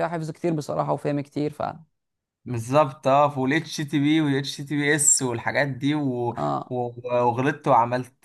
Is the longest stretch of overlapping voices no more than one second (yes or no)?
yes